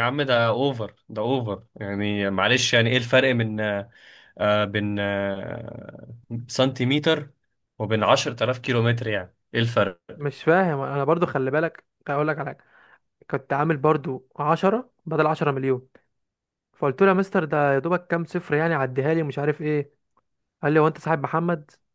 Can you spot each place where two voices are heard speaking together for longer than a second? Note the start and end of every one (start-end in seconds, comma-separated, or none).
none